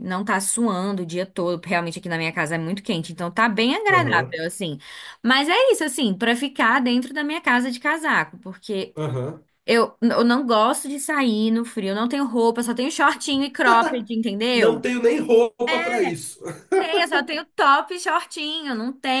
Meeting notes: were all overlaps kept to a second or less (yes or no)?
yes